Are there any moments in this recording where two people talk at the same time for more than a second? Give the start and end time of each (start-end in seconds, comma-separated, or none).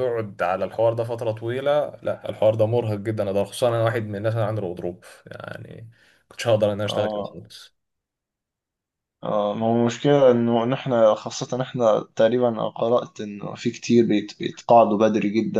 none